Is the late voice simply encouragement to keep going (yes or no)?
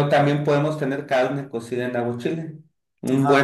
yes